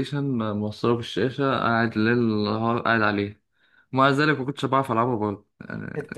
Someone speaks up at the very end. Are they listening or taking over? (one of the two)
taking over